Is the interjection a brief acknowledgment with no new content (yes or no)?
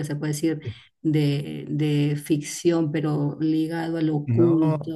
no